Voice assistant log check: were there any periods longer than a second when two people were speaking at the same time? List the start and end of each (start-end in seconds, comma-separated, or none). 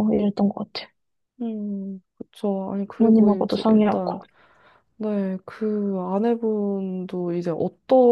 3.0-4.2